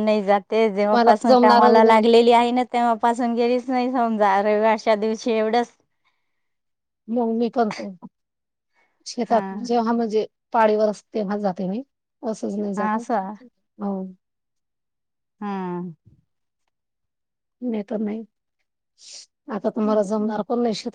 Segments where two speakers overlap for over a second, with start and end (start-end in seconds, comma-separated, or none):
0.9-2.1